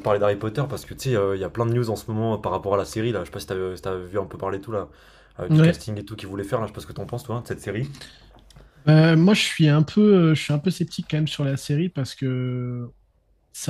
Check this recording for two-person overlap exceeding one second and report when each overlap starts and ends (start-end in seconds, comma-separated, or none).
none